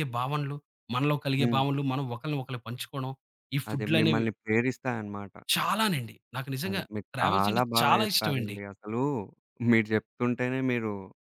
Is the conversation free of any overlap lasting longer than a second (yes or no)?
no